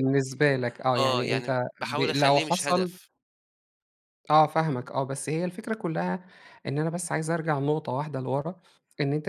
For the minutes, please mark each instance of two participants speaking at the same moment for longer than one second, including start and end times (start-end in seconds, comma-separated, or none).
1.0-3.0